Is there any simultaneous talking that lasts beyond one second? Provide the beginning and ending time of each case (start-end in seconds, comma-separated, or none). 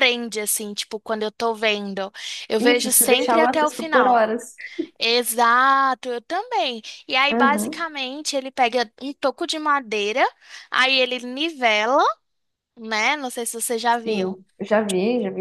2.6-4.2